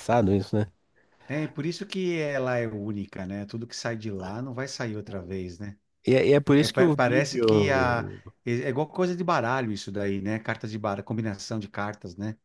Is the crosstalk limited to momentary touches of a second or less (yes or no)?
no